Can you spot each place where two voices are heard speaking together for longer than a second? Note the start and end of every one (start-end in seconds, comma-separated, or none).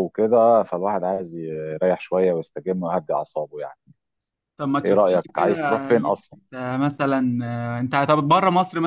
4.8-6.4